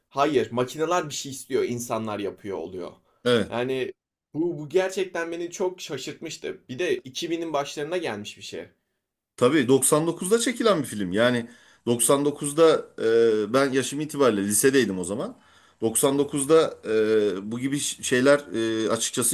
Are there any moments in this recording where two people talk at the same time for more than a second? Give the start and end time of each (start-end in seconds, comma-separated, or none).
none